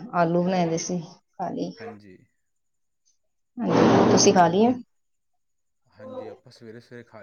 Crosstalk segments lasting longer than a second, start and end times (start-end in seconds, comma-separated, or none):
none